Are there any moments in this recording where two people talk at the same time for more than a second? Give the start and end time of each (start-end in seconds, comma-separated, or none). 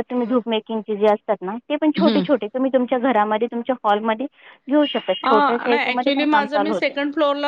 5.3-7.0